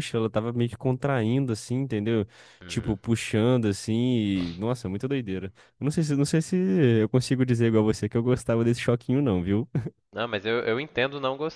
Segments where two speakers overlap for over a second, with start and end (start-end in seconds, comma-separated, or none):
none